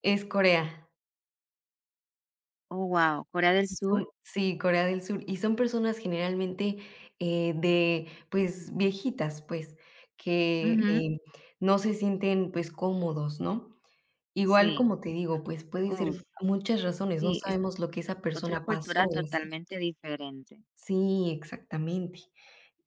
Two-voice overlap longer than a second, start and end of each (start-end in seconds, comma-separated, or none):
18.3-19.6